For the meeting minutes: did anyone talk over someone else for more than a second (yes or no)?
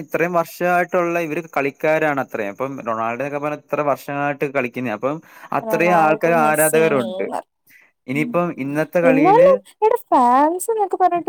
yes